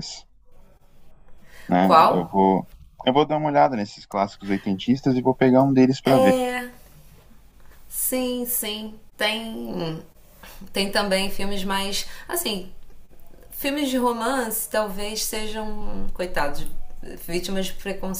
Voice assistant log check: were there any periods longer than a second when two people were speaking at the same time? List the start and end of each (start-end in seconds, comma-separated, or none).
none